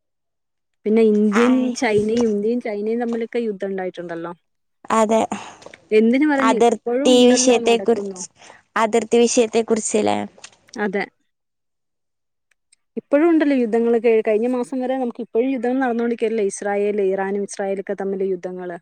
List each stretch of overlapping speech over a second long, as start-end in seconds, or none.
6.6-8.2